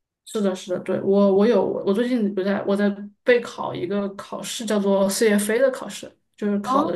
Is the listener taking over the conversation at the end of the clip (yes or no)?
no